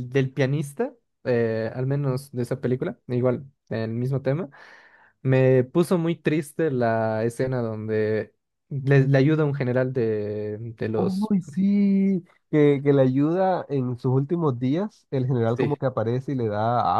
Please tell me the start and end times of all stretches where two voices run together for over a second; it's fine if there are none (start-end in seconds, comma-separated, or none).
none